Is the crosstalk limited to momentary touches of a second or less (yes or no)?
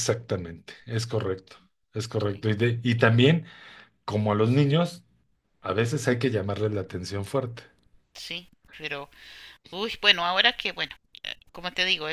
yes